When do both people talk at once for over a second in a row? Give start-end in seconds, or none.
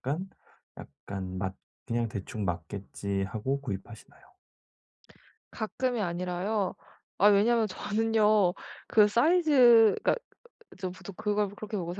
none